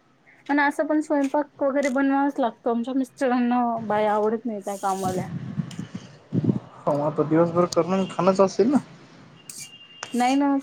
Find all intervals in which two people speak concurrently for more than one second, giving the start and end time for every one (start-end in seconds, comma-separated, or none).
none